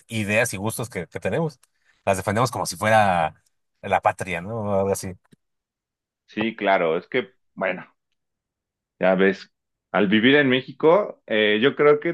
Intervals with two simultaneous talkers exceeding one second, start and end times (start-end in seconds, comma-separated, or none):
none